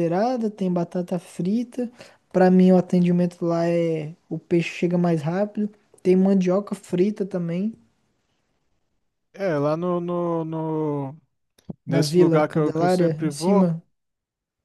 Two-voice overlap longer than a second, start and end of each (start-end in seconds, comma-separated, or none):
11.9-13.7